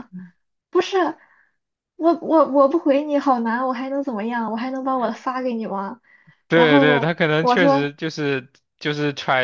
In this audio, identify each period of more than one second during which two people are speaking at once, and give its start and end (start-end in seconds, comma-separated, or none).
6.5-7.9